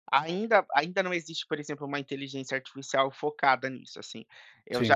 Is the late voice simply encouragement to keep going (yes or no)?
yes